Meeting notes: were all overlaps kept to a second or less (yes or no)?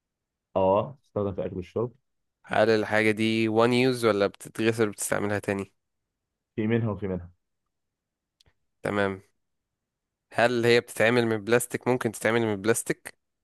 yes